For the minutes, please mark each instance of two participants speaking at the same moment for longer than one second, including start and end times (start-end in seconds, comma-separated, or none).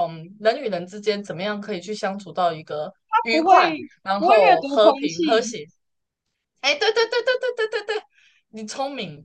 4.2-5.6